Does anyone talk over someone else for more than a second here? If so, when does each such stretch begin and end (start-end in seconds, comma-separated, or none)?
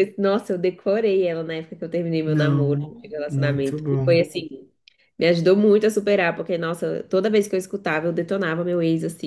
2.2-4.2